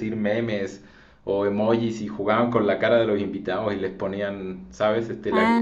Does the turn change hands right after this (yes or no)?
no